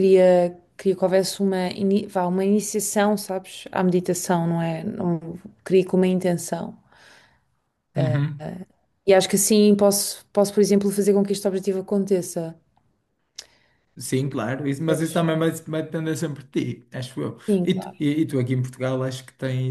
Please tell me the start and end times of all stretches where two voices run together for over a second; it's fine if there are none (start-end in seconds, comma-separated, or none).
none